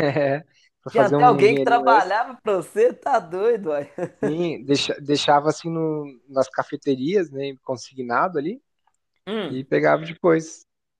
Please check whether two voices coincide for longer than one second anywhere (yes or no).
yes